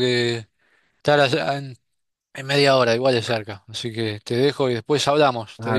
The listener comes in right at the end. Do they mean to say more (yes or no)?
yes